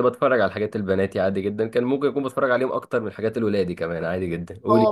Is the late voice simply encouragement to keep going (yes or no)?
no